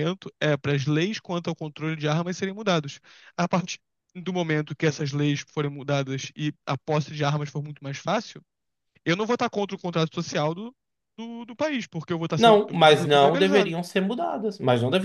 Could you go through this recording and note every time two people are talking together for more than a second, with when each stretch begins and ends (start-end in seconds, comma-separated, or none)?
12.3-13.8